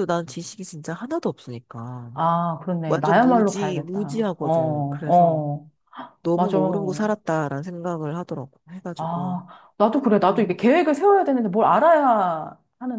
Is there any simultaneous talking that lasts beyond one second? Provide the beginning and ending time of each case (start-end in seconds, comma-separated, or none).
2.9-5.4